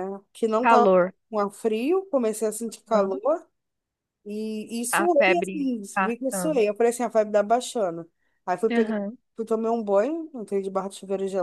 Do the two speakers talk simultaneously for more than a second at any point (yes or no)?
yes